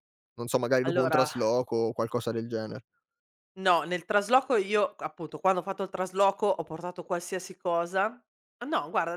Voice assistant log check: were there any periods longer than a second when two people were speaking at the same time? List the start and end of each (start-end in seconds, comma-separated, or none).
none